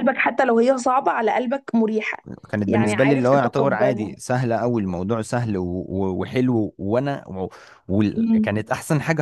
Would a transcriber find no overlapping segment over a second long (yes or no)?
no